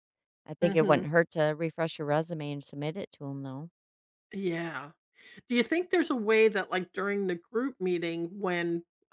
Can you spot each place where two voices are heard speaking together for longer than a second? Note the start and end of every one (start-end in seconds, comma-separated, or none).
none